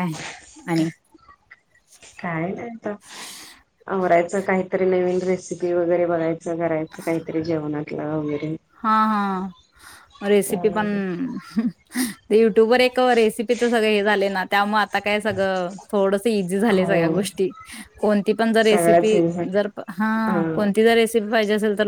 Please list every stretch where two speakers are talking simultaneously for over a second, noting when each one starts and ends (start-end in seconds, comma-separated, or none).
none